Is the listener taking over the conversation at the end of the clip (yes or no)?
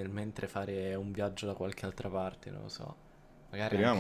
yes